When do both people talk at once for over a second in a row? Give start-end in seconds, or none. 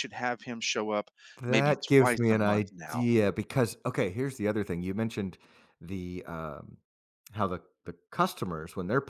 1.5-3.1